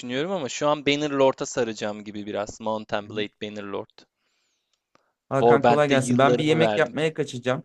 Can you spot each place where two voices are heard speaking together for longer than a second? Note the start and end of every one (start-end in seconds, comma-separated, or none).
5.4-6.9